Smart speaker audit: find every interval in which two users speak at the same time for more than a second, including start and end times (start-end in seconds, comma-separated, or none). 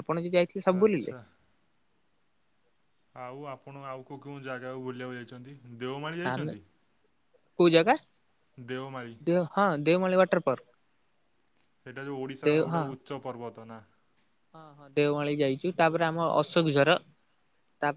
none